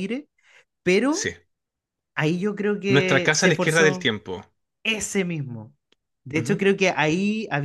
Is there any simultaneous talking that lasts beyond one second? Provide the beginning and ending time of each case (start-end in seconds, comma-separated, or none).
2.9-4.1